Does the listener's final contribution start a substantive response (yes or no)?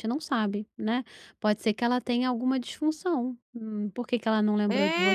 yes